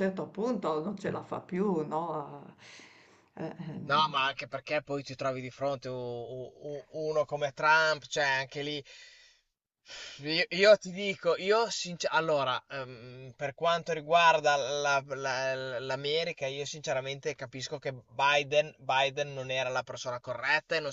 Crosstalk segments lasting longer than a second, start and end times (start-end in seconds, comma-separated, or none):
none